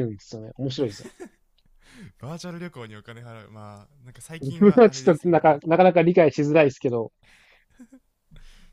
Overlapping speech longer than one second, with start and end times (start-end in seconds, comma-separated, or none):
4.4-5.6